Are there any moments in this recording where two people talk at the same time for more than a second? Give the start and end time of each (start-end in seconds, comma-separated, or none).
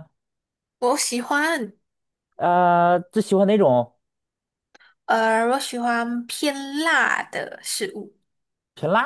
none